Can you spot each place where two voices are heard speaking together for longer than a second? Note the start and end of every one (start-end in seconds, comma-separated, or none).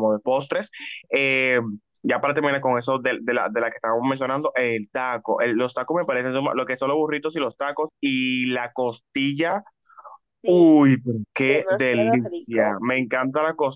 11.4-12.8